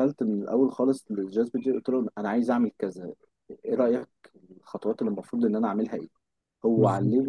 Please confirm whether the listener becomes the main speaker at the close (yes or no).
no